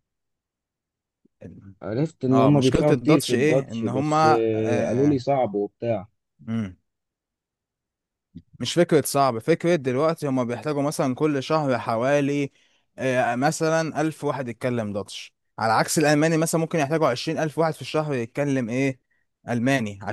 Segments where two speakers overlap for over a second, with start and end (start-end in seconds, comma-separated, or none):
2.3-5.2